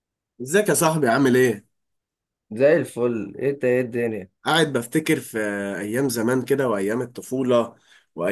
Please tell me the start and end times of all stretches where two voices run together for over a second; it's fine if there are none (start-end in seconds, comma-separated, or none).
none